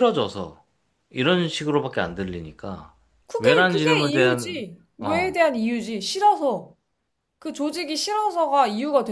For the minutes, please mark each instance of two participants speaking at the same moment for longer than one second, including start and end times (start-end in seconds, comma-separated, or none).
3.4-5.3